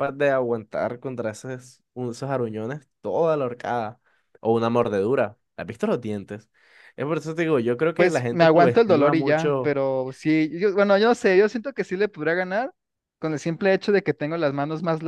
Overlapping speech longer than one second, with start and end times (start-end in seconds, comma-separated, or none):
8.0-9.7